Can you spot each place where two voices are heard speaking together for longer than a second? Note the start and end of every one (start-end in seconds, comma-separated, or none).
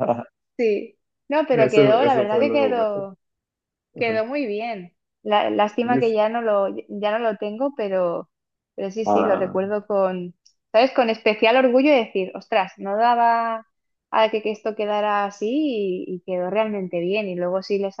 1.5-3.0